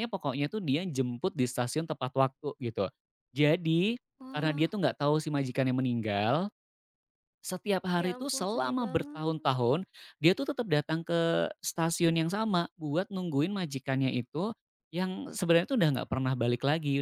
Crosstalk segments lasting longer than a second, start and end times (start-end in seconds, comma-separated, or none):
8.0-9.5